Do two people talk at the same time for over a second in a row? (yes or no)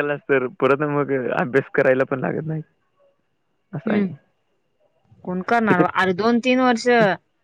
no